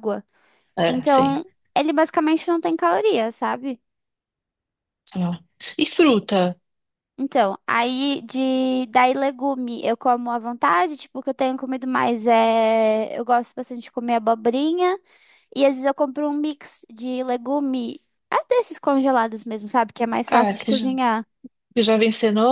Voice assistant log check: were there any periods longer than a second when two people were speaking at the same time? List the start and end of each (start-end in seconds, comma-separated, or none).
none